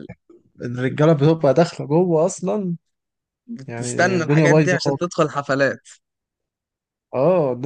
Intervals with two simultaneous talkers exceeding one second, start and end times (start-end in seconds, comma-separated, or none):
3.7-5.0